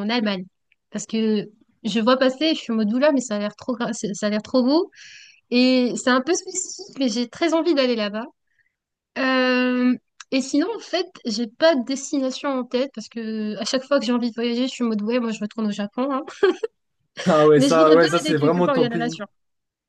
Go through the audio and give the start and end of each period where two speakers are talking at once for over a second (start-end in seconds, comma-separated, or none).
17.6-19.1